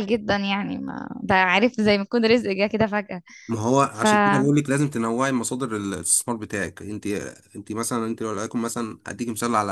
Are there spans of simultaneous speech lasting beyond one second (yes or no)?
no